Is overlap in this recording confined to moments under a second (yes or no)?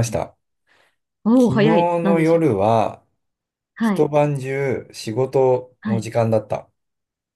no